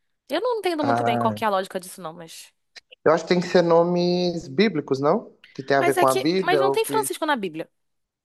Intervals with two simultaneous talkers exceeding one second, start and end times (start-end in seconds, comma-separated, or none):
5.7-7.1